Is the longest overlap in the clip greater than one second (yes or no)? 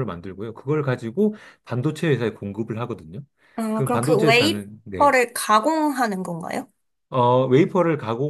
yes